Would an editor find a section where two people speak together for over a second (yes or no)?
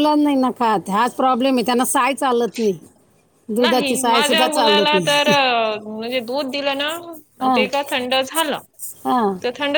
yes